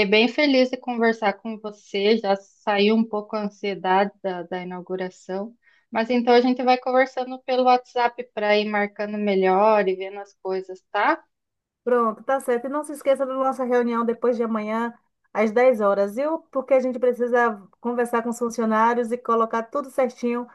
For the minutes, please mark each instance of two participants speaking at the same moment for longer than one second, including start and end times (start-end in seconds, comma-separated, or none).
none